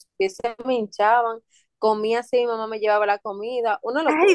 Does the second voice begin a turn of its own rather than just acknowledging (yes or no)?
yes